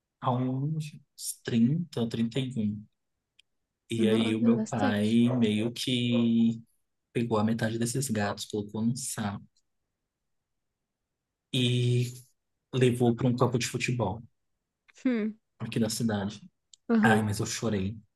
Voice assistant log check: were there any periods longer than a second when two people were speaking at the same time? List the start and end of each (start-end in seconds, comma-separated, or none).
4.0-5.2